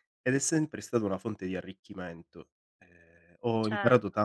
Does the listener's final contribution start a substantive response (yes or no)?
no